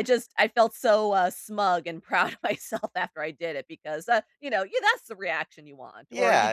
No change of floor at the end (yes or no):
no